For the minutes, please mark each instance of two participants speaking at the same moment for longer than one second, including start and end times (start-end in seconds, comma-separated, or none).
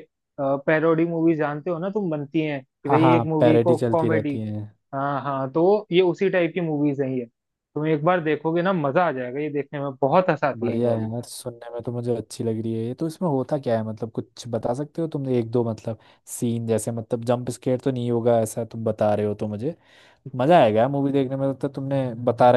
2.9-4.3